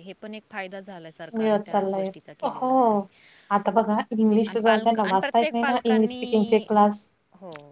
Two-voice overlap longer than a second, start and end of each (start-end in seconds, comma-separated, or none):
4.5-6.7